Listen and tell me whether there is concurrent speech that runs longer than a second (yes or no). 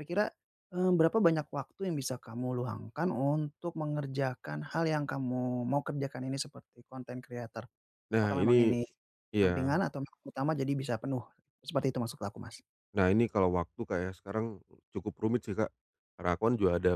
no